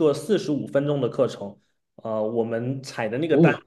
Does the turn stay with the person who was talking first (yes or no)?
yes